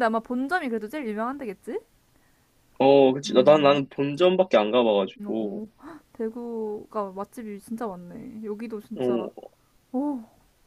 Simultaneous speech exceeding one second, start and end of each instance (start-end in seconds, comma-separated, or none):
none